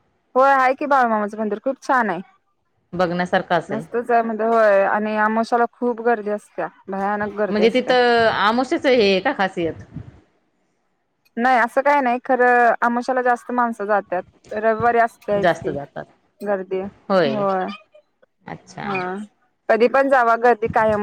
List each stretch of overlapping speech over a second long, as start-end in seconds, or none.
none